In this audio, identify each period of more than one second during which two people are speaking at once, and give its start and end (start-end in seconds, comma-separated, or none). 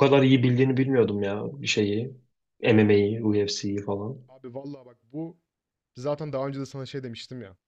none